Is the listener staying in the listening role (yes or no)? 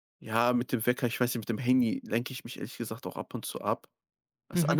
no